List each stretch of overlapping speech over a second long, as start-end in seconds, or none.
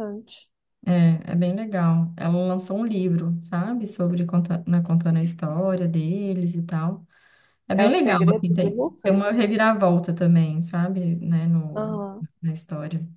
7.8-9.3